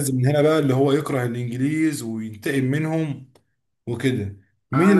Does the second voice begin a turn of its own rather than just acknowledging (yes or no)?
yes